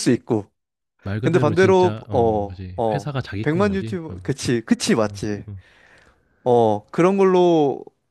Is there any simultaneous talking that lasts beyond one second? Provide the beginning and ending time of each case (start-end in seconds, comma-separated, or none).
1.2-4.3